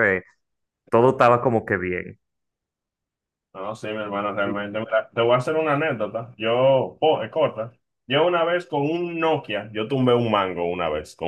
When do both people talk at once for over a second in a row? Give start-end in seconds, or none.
none